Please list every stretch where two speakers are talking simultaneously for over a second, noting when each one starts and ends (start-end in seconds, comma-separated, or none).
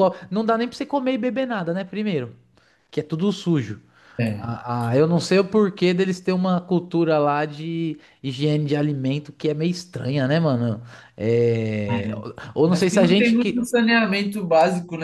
11.9-13.6